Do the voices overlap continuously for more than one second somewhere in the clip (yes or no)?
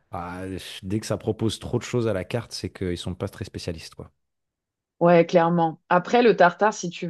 no